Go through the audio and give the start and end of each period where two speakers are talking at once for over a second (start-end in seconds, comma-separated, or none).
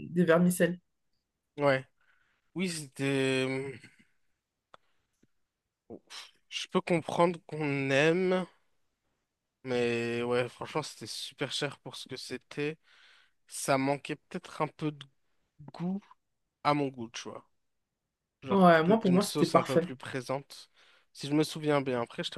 18.5-19.9